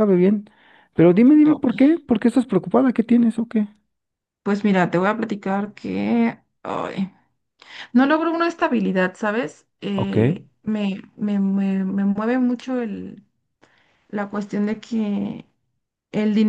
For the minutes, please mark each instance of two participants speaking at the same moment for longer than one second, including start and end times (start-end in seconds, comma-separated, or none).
none